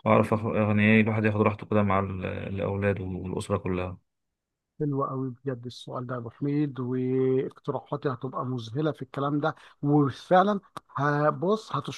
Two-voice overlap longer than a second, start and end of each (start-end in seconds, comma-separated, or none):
none